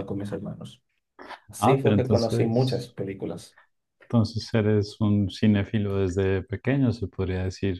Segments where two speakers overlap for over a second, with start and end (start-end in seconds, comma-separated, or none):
1.6-2.9